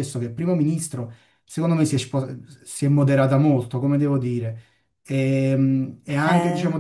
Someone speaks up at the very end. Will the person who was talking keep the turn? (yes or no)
yes